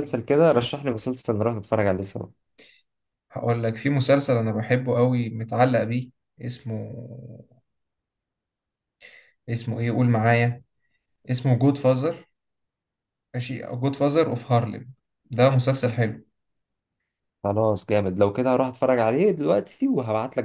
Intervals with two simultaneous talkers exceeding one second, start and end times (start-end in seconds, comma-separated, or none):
none